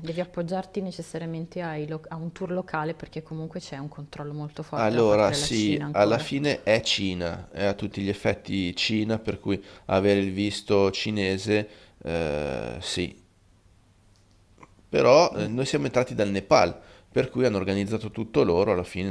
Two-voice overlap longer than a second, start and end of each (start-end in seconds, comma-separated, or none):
4.7-6.3